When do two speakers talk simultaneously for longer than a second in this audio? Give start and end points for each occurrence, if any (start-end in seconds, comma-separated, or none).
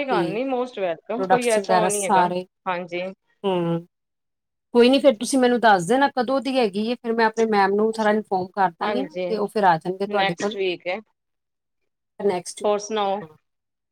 none